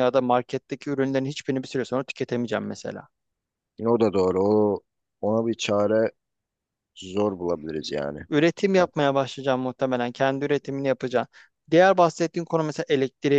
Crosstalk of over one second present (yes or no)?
no